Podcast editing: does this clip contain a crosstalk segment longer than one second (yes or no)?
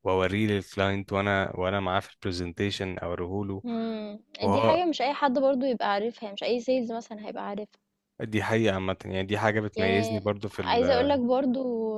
yes